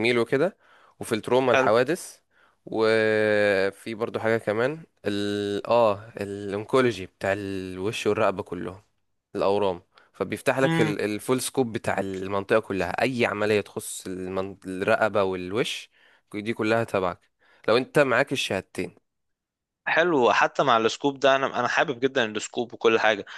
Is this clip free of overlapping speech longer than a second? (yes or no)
yes